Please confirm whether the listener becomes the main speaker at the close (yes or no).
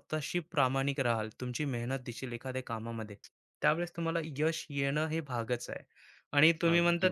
no